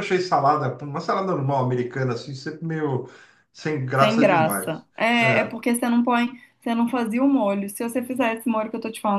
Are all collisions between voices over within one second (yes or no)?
no